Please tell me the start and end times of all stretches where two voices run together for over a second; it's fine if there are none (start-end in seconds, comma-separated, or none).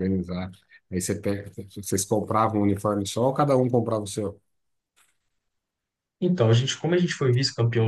none